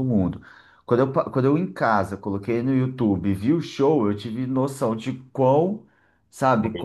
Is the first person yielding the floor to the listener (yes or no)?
no